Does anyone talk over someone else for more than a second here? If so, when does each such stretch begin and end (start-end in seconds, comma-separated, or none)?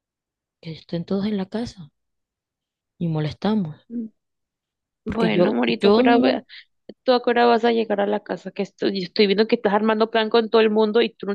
5.0-6.5